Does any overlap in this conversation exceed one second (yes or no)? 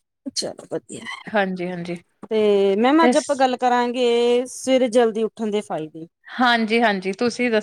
no